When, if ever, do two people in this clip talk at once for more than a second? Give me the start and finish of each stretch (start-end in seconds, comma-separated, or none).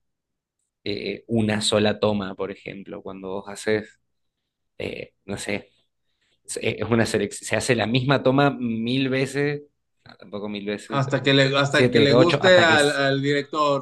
10.9-13.1